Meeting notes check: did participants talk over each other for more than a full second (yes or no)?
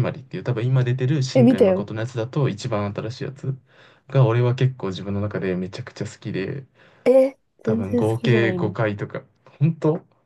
yes